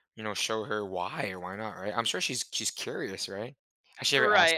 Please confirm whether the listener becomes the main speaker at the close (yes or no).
yes